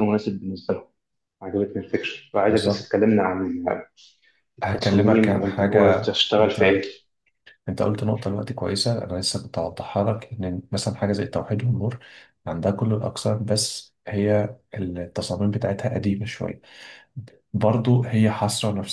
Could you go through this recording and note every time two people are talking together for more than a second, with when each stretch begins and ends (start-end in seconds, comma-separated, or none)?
4.6-6.8